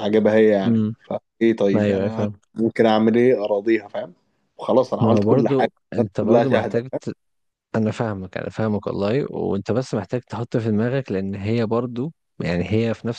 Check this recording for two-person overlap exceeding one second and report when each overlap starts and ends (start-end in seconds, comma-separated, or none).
5.0-7.0